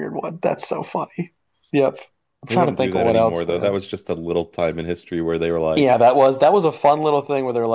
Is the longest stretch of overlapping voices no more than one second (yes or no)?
no